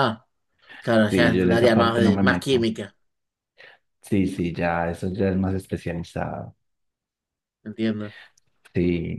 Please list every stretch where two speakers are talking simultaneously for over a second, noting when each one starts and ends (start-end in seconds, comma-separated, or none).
1.1-2.7